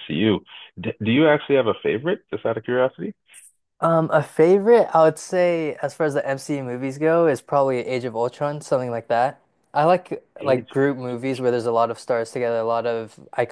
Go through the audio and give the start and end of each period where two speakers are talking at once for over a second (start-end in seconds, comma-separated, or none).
none